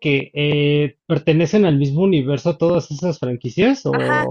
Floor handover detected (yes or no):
yes